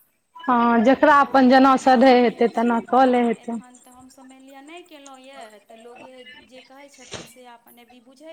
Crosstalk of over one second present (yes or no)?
yes